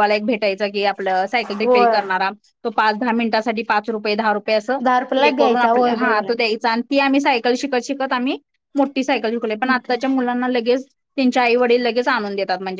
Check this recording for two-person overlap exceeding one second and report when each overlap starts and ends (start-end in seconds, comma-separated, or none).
4.8-6.2